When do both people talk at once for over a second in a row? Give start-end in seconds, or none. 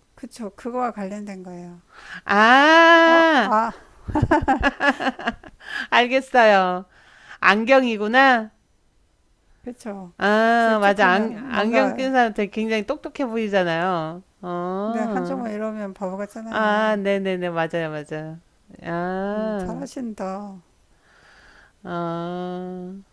10.6-12.1